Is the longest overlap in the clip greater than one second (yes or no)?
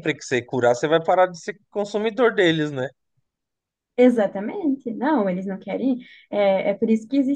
no